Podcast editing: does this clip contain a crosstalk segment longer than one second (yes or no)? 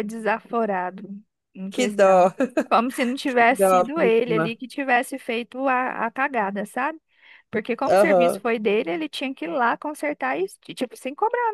yes